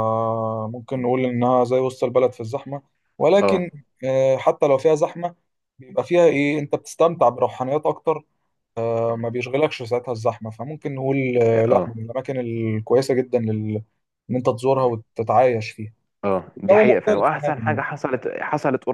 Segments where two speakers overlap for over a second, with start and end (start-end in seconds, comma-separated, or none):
16.6-17.8